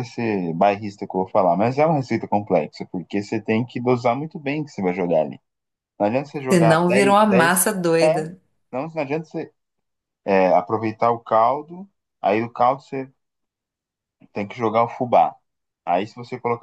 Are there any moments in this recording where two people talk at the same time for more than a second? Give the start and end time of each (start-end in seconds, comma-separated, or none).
6.5-8.1